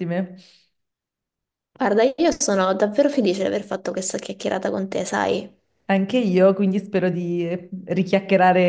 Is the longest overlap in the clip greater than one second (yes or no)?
no